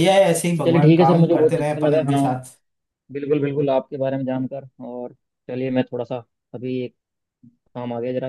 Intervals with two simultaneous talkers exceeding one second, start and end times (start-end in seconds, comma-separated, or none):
0.6-2.2